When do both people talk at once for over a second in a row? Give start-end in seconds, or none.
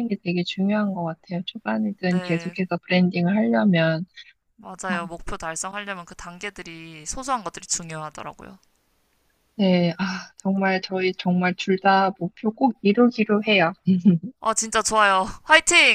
none